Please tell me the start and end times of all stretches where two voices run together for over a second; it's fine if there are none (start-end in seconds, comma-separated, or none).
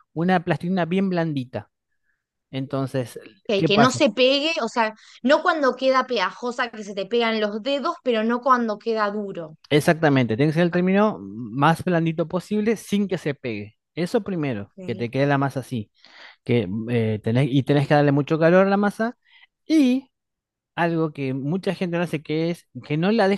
none